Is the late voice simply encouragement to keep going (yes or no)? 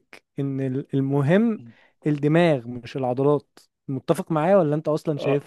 no